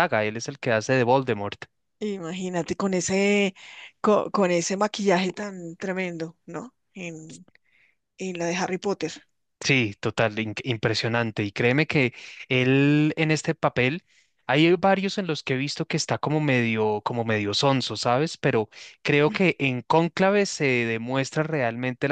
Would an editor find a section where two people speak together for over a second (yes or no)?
no